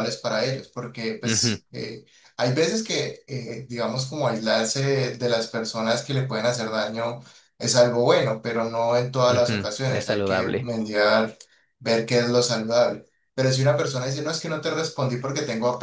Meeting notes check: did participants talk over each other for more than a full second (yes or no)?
yes